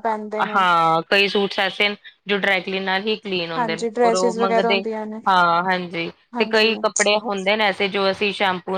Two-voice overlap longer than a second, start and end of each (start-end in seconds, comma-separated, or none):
3.6-4.8